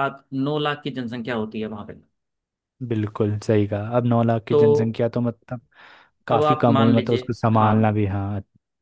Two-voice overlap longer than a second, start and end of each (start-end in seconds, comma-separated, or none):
6.3-7.7